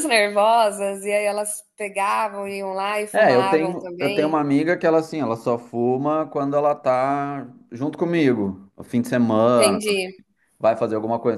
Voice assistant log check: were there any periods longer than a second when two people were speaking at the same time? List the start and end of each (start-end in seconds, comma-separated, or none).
3.1-4.4